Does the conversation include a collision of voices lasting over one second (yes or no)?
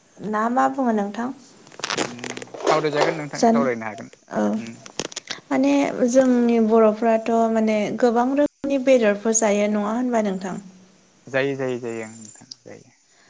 no